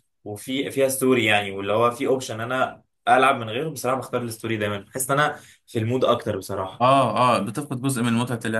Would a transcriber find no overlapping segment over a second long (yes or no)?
yes